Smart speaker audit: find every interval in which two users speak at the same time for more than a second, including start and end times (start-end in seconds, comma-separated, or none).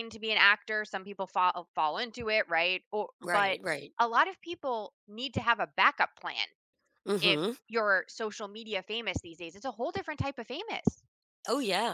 none